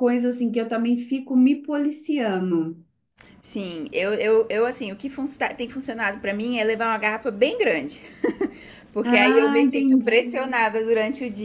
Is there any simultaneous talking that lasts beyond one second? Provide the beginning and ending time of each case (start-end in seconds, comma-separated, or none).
9.0-10.5